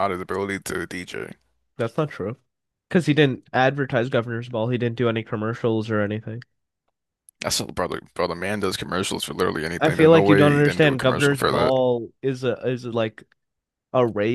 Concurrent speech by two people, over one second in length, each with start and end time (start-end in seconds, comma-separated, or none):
9.8-11.7